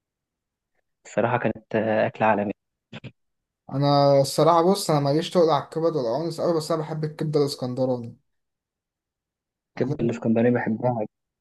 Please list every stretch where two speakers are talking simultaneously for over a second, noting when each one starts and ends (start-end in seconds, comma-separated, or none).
none